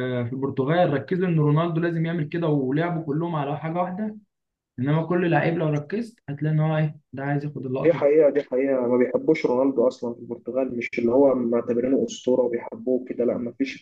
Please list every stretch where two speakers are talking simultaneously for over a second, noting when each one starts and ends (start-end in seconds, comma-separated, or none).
none